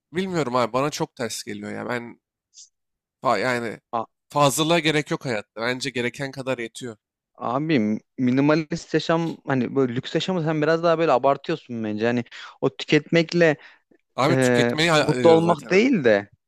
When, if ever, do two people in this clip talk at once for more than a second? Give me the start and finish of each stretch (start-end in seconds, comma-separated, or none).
14.3-15.8